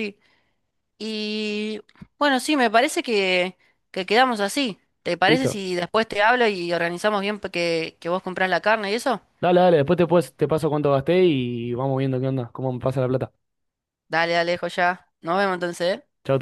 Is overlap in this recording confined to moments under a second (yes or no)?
yes